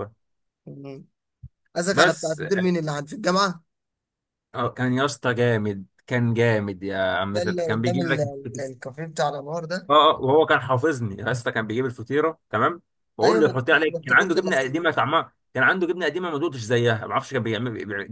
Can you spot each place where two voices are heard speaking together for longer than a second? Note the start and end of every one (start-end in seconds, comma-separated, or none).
7.3-8.6, 13.2-14.8